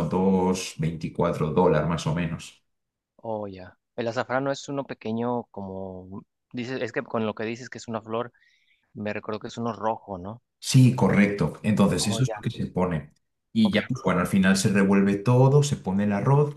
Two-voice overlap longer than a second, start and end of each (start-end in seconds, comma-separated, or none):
none